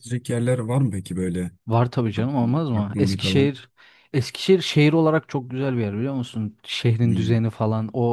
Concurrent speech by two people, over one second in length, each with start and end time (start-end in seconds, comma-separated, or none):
2.2-3.6